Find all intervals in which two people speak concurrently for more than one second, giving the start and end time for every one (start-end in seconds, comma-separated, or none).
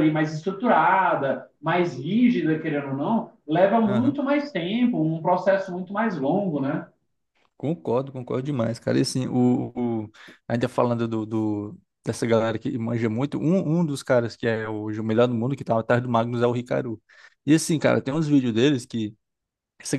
none